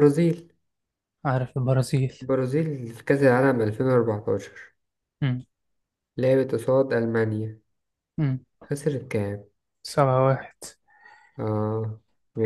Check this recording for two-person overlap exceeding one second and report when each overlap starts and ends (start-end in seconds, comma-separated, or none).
none